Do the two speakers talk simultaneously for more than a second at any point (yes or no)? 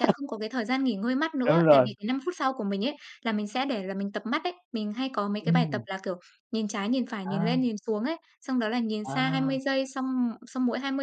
no